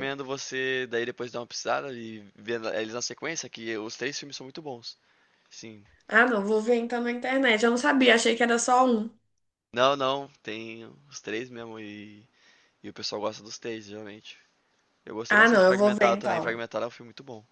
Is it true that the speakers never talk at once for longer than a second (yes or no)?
no